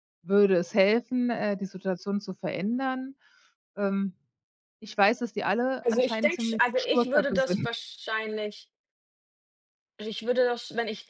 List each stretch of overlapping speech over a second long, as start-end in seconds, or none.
5.8-7.7